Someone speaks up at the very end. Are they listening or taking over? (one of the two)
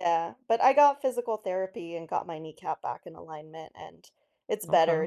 listening